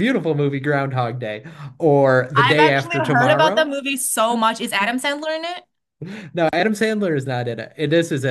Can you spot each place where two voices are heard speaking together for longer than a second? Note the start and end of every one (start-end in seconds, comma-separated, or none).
2.4-3.7